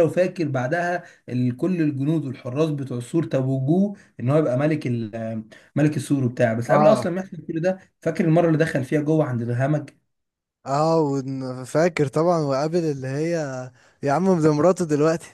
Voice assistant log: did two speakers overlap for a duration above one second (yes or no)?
no